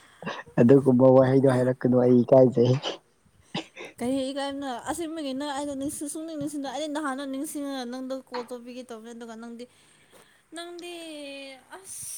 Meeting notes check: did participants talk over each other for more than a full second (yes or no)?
no